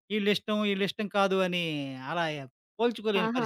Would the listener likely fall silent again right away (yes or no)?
no